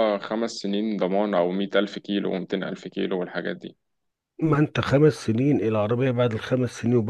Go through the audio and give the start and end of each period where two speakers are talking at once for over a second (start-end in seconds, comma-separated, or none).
none